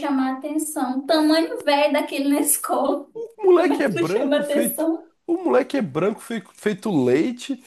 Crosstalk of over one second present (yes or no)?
yes